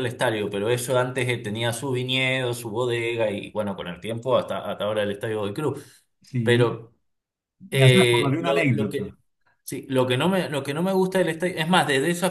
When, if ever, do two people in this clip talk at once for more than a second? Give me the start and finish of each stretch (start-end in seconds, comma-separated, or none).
7.7-9.2